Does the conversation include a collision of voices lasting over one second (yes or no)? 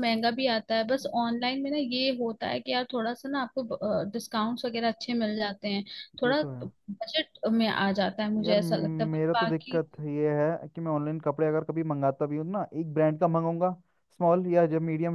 yes